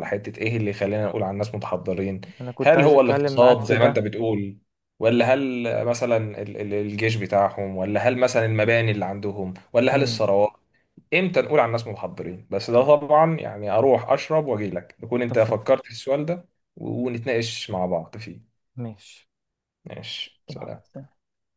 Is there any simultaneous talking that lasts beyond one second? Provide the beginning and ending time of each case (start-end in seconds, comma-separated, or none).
2.6-4.0